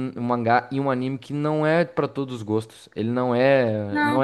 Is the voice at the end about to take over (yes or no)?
yes